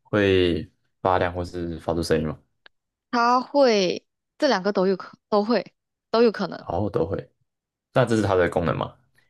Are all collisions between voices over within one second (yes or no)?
yes